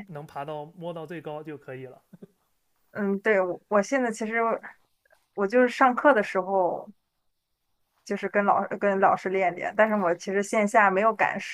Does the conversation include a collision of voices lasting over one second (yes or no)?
no